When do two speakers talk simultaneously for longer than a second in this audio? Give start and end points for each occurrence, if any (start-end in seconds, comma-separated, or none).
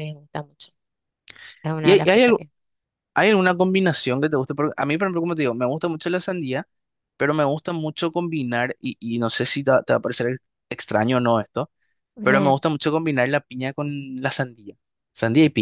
none